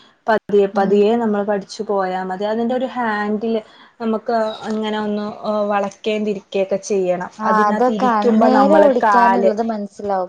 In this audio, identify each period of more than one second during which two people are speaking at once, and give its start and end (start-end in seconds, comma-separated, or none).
7.5-9.5